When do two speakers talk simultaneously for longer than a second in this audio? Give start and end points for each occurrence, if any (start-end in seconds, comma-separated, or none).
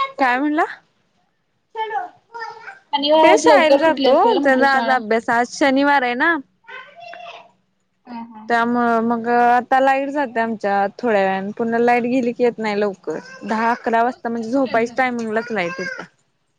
3.2-4.9